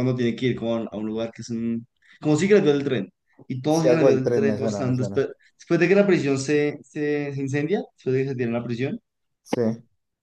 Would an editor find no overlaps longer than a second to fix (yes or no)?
no